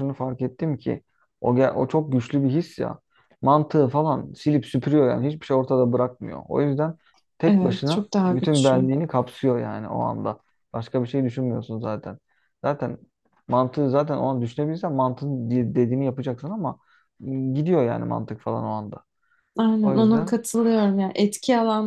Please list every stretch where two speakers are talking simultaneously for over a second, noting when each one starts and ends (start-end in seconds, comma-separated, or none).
7.5-8.9